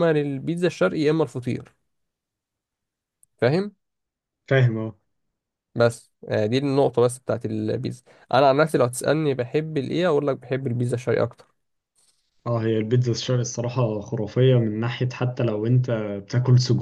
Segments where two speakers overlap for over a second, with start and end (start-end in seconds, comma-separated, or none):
none